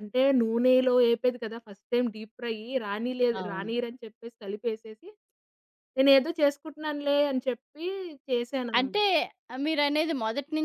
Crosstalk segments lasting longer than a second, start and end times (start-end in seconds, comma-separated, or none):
none